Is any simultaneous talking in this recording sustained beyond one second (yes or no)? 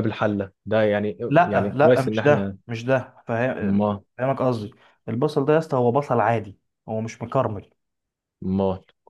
yes